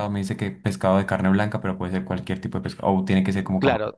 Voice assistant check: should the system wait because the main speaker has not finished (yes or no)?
no